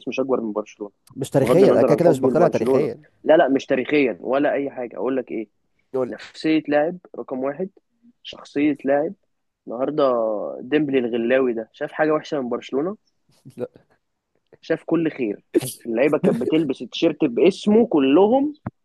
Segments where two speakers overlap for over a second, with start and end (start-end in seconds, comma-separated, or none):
1.4-3.0